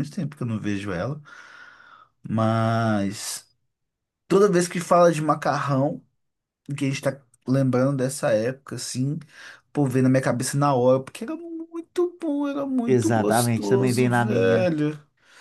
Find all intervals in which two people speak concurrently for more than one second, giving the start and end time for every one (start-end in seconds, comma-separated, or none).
12.8-14.7